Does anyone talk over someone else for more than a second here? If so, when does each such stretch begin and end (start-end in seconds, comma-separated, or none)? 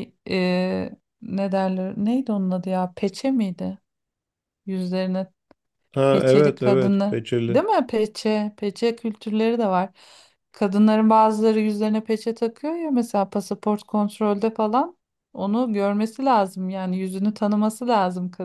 6.1-7.6